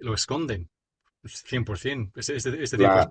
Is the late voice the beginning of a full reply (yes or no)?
no